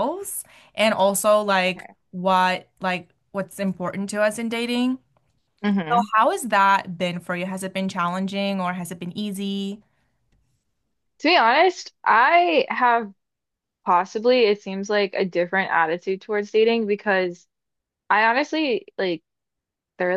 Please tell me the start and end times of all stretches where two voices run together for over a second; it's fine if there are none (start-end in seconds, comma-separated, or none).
none